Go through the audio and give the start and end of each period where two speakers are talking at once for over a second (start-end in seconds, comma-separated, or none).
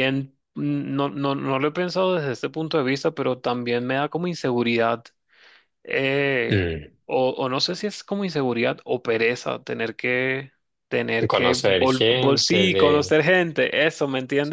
11.3-13.1